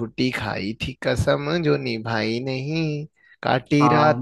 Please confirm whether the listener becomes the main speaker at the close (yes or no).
no